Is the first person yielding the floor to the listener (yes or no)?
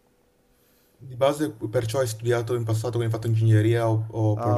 yes